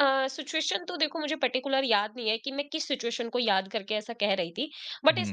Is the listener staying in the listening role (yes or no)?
yes